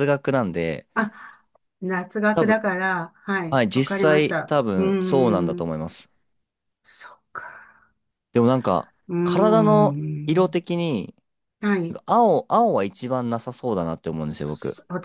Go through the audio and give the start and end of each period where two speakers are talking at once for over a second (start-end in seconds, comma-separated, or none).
3.5-5.7, 9.1-10.6